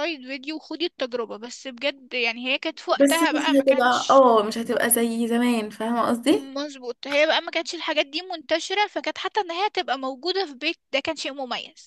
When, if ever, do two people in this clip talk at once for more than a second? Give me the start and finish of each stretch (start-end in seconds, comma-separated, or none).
3.0-4.2